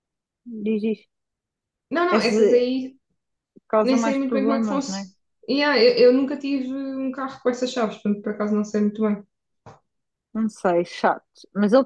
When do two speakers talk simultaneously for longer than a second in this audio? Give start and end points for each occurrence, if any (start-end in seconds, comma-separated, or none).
3.8-5.1